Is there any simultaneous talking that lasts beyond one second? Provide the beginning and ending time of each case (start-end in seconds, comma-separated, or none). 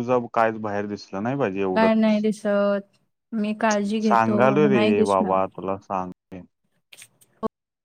4.0-5.3